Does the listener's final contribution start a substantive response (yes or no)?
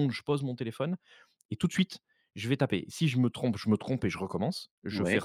no